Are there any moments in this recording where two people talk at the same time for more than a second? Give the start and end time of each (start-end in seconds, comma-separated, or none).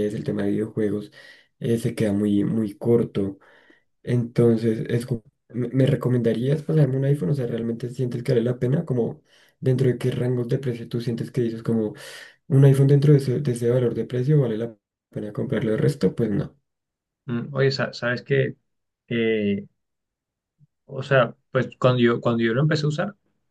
none